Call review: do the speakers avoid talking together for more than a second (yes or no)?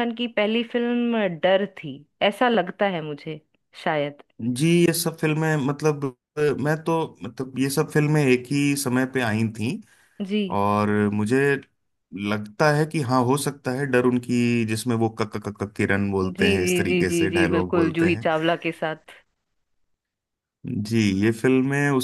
no